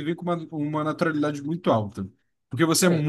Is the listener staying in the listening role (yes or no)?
yes